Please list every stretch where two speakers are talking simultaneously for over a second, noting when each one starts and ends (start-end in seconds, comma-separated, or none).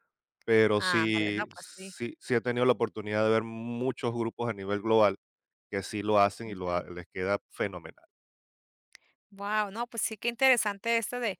0.8-2.0